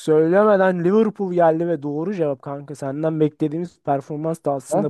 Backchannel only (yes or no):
no